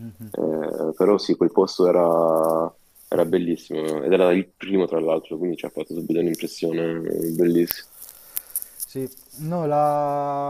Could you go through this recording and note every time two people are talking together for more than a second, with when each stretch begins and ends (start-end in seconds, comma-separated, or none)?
none